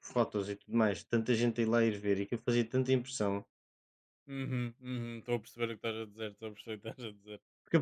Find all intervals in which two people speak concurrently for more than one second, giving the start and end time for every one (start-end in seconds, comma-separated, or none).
none